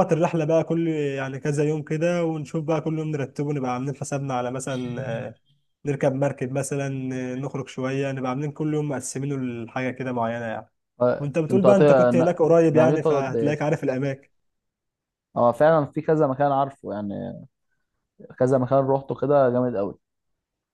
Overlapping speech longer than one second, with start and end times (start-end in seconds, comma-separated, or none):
11.2-13.6